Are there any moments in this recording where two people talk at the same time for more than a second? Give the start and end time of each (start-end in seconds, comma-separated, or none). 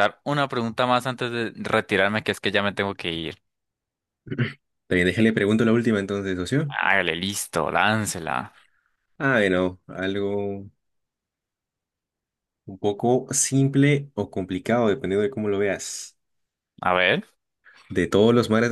none